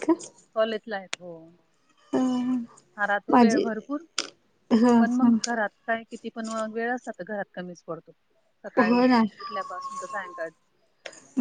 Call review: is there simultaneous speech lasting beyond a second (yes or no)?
no